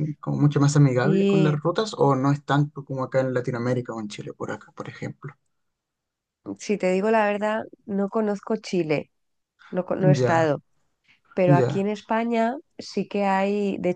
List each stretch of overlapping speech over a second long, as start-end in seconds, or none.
none